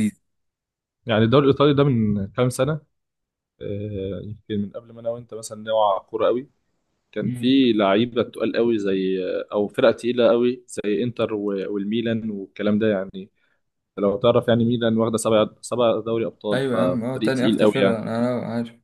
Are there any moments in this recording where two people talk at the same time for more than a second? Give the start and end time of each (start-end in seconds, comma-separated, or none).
16.5-18.0